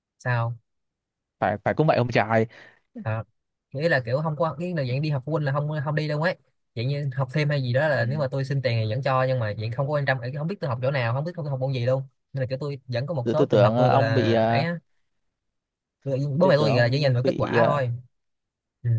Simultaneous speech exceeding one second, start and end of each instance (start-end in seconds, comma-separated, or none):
13.2-14.7, 16.4-17.8